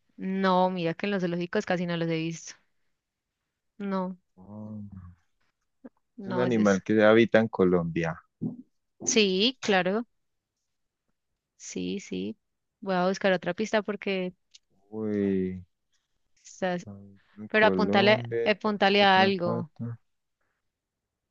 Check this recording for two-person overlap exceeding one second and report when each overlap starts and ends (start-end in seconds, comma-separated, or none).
17.5-19.7